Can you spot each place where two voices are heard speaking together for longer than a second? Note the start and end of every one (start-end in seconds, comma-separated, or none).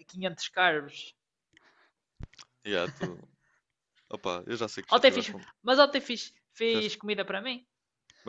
none